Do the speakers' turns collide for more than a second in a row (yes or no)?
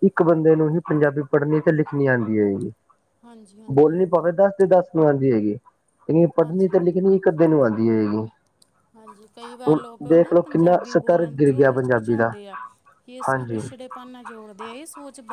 yes